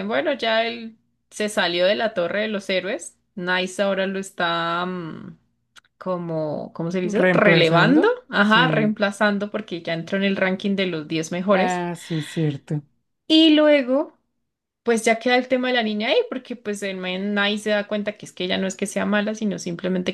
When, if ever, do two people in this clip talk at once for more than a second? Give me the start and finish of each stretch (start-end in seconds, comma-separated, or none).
7.0-9.0